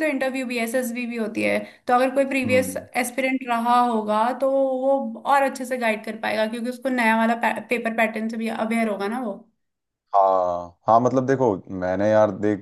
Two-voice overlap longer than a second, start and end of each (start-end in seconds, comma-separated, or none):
none